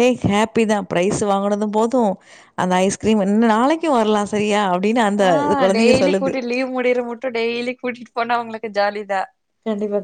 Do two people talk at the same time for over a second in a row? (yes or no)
no